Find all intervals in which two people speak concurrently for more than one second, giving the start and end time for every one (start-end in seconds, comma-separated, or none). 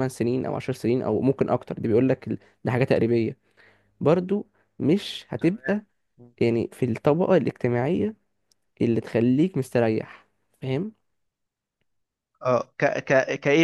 none